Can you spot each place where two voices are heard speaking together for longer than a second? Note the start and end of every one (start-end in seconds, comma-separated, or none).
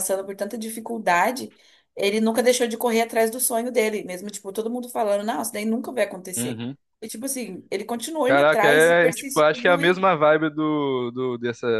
8.2-10.1